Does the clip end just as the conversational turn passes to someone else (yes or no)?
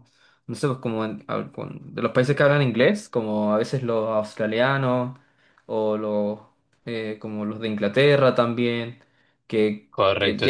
no